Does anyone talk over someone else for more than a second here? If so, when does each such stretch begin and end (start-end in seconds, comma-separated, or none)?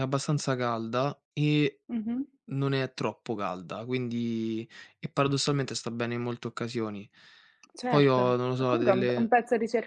7.9-9.3